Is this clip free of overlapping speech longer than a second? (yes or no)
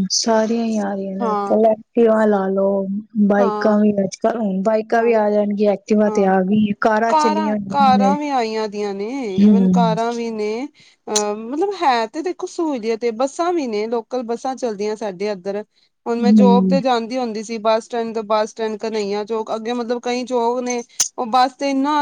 yes